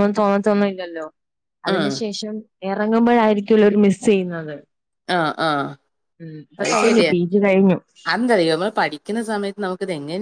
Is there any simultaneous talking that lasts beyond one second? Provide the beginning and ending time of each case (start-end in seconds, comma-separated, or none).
none